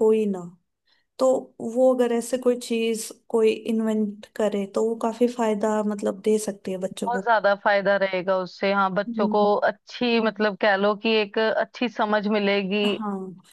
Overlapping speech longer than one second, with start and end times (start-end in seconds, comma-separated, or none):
none